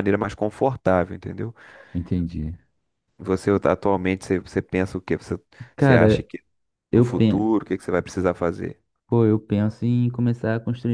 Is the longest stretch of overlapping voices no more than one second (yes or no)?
yes